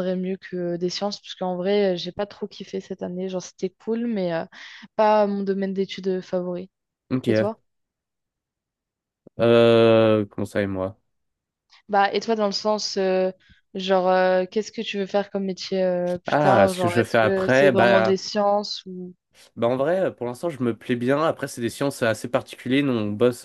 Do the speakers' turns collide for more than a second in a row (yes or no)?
yes